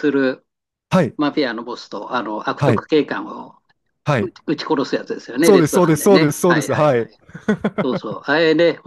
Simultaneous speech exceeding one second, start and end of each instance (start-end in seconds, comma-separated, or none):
5.4-6.9